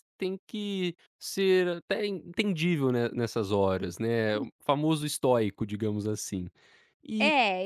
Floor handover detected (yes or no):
yes